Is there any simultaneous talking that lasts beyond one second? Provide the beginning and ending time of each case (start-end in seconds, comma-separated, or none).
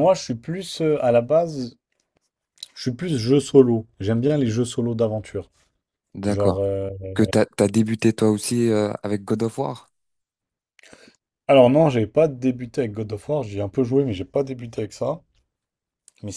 none